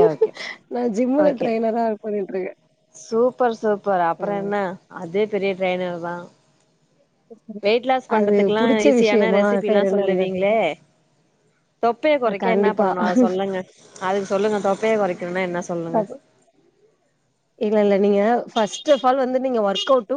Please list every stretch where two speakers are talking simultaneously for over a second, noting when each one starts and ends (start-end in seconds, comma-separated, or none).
8.2-10.4